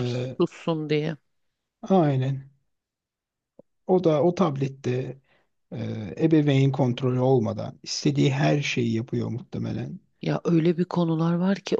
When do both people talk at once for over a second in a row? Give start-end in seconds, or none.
none